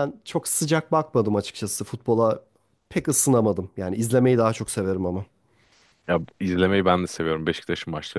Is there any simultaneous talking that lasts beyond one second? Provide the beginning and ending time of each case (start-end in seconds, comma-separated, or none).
none